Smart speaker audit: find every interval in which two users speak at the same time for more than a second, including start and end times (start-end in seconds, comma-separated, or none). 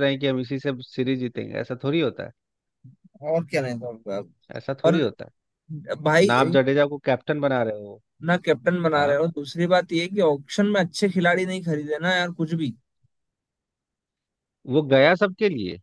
none